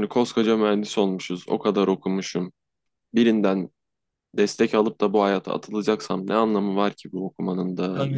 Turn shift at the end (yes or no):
yes